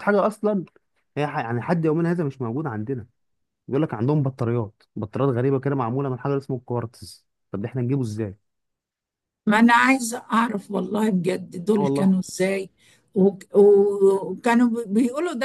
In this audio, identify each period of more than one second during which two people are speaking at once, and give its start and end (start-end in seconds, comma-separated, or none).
none